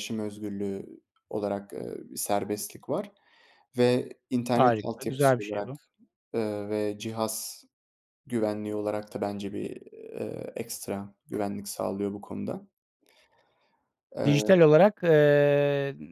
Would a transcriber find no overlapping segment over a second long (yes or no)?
no